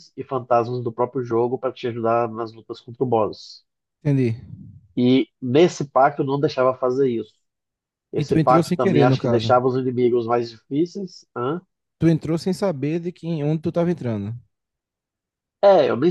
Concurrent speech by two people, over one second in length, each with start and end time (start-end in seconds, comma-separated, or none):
8.2-9.5